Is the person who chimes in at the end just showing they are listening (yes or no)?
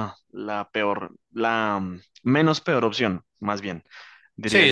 no